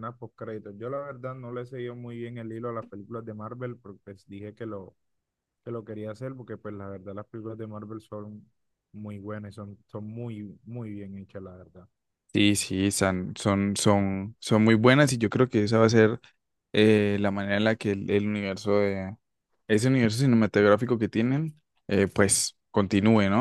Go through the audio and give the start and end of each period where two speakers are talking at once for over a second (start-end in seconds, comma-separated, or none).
none